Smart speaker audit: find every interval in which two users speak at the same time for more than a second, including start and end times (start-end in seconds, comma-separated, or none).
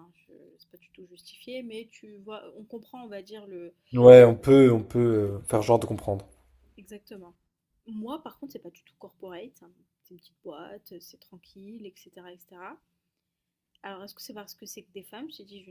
none